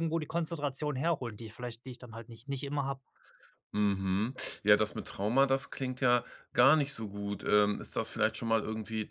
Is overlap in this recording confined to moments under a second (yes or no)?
yes